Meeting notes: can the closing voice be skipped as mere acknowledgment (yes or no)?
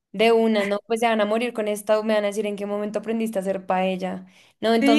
no